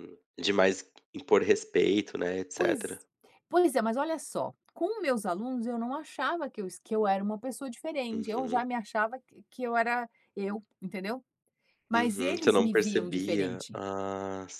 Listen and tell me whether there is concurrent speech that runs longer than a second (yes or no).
yes